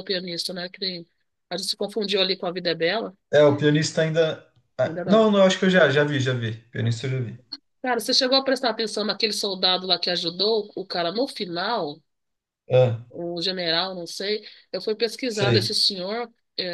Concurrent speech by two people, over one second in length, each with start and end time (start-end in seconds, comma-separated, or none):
none